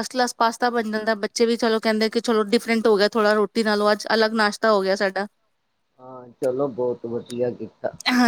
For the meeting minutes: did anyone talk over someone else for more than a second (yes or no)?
no